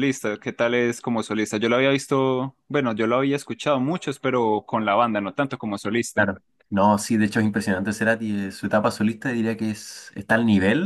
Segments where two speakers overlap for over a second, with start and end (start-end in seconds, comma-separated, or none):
none